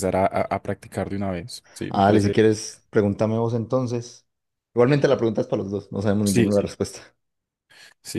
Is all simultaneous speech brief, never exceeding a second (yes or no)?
yes